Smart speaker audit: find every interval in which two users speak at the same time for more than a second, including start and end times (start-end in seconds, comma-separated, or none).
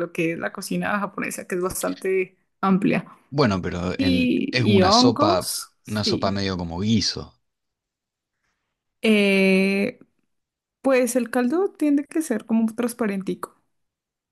4.0-6.4